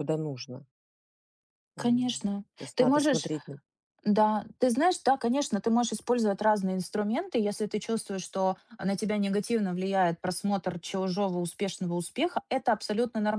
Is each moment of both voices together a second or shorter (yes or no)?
no